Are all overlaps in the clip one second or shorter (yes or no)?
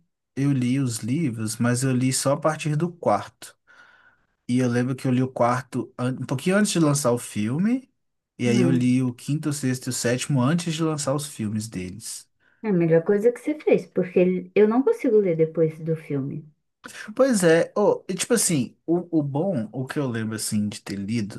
yes